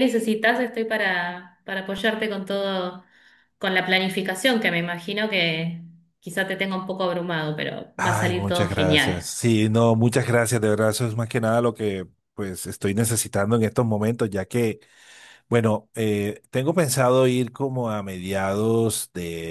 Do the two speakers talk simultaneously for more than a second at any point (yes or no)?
yes